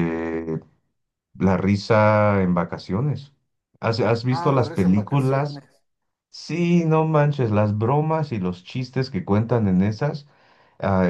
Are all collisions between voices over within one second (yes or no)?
no